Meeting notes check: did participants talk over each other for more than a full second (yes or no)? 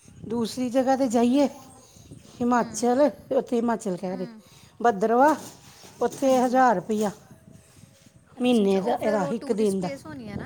yes